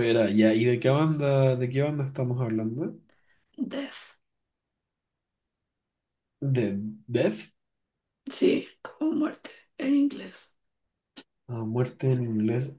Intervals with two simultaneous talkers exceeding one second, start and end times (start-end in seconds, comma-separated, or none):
none